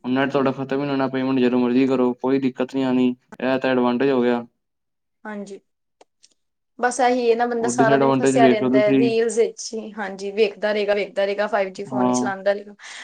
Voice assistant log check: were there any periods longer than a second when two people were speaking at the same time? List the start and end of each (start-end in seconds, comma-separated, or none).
7.6-9.0